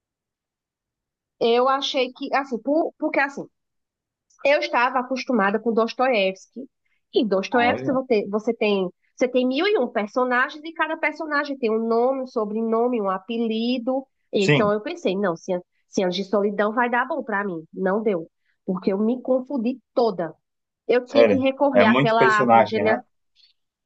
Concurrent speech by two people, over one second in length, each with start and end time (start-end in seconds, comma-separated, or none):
21.1-23.0